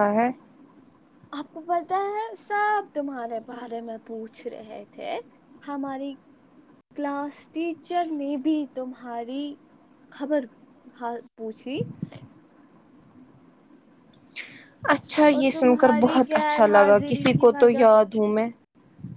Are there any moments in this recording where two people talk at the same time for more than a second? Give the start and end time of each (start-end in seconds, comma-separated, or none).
15.3-18.3